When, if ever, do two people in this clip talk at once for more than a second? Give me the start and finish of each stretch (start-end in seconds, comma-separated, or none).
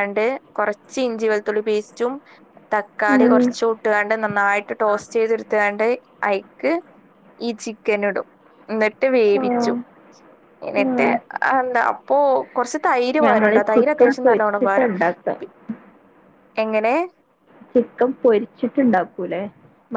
13.2-14.9